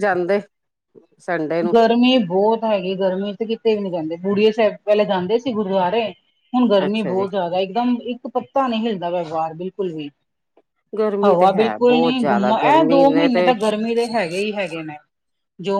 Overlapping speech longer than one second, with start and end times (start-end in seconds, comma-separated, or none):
11.2-13.3